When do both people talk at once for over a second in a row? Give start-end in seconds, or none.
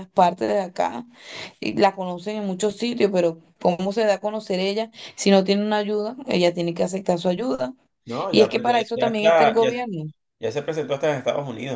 8.3-9.7